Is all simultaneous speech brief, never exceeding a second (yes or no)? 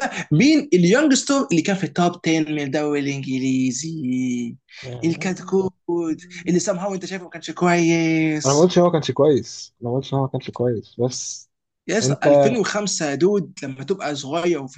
yes